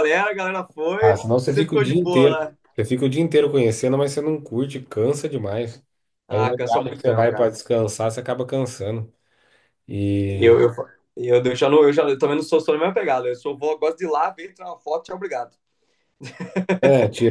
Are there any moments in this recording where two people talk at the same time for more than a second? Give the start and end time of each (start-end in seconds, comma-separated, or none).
1.0-2.6, 6.3-7.6